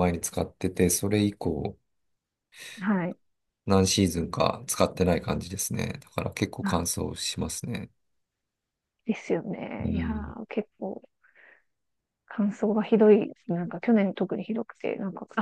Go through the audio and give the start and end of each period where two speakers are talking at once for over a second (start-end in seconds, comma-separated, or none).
none